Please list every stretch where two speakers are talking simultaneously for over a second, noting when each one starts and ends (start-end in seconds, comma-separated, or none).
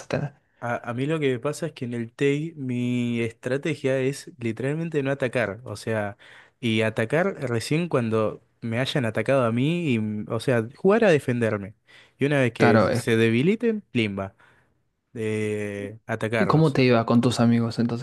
none